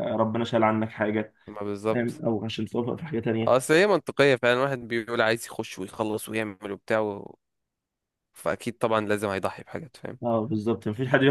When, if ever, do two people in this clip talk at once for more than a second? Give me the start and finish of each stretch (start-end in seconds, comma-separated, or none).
none